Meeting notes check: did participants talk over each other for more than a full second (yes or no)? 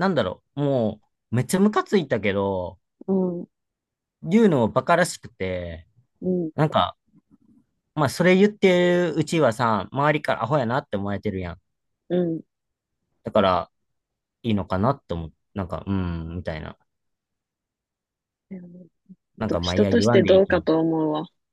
yes